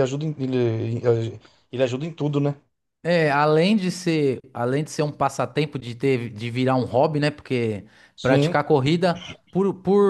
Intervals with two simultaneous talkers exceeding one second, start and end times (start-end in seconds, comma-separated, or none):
none